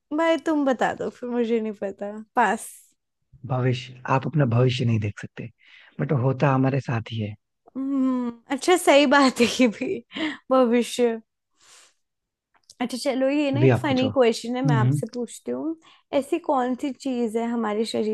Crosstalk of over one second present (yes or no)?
yes